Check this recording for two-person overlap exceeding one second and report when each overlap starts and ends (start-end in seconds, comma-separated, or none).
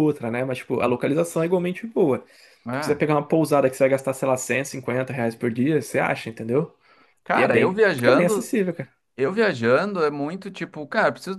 7.3-8.5